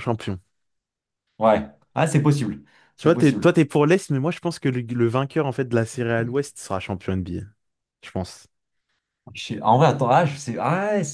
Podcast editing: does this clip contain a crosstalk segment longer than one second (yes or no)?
no